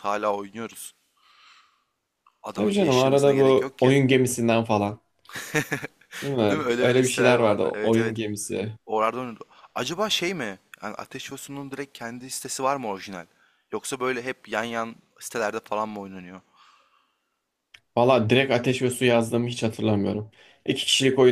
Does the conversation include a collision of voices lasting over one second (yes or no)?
yes